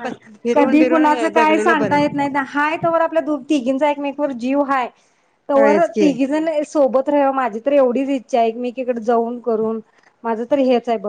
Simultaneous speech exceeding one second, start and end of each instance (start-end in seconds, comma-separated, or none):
0.5-2.0